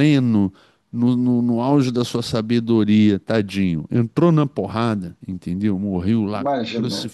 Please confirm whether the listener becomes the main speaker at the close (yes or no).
no